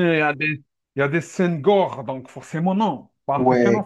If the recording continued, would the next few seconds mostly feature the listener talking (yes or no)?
yes